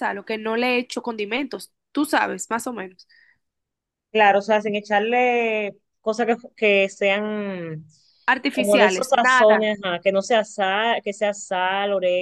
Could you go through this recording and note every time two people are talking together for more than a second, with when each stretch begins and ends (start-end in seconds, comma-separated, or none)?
8.5-9.8